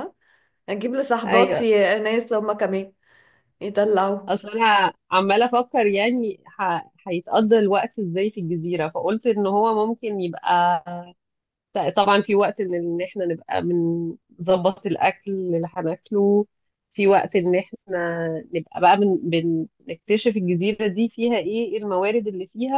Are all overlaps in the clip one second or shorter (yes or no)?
yes